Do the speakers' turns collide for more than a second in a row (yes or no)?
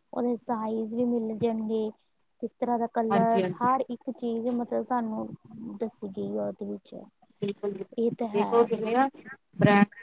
no